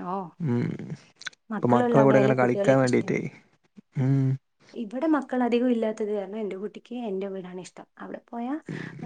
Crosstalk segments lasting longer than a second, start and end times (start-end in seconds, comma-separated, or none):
1.6-3.1